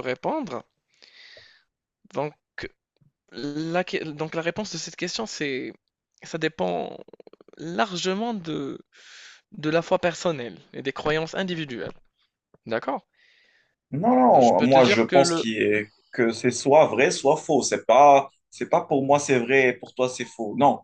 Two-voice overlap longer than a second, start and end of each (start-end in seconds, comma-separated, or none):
14.3-15.5